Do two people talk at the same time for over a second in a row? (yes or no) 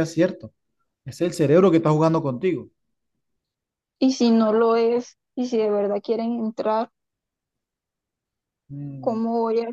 no